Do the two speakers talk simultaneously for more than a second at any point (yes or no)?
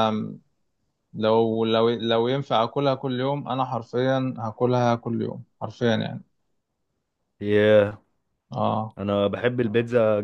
no